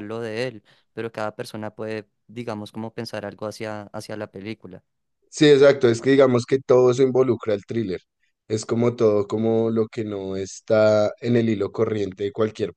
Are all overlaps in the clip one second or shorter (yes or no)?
yes